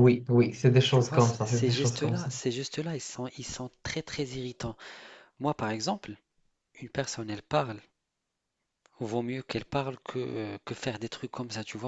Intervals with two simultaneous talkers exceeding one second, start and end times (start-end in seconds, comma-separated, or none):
0.9-2.3